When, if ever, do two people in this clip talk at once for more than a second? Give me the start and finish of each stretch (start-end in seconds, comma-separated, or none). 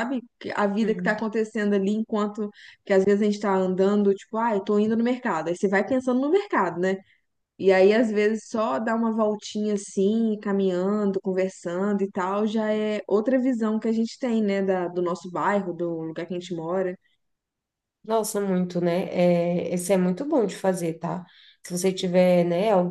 none